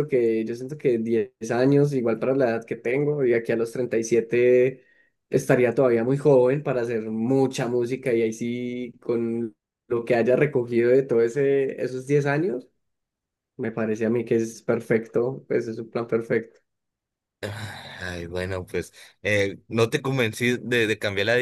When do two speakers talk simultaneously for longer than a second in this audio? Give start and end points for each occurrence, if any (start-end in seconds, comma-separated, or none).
none